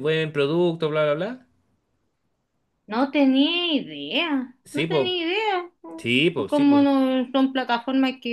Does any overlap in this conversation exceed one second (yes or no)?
no